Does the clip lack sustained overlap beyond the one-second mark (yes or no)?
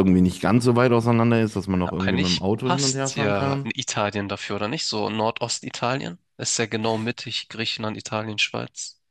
no